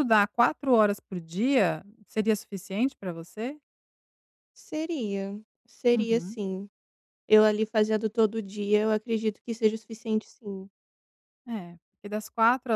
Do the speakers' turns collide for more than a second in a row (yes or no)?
no